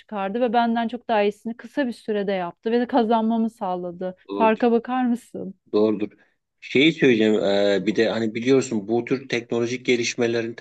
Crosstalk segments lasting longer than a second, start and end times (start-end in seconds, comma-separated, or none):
none